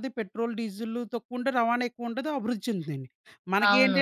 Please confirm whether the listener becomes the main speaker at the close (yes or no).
no